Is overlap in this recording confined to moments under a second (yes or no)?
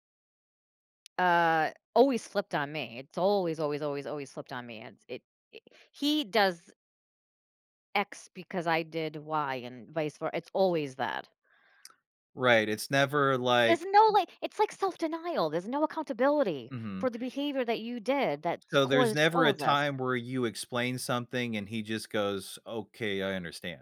no